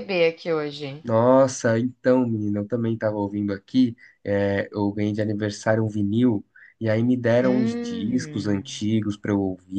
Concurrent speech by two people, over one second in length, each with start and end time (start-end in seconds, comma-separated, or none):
7.4-8.9